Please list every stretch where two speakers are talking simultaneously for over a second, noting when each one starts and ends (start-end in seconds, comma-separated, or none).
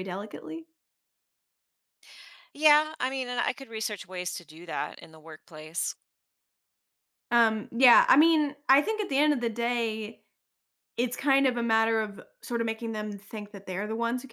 none